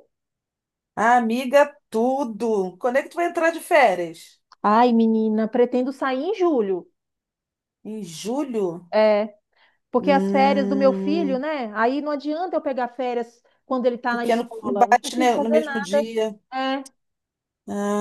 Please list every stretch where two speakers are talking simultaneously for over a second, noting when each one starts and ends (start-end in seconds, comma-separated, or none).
10.0-11.4, 14.1-16.0